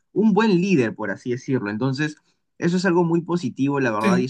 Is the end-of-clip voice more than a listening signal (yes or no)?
no